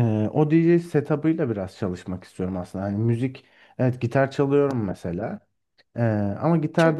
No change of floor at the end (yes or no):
yes